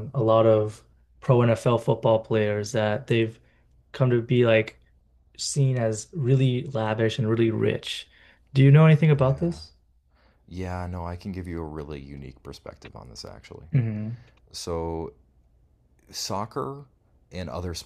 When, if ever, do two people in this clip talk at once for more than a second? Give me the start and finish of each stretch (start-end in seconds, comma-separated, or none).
none